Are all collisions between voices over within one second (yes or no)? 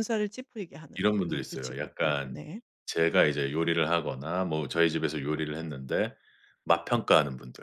no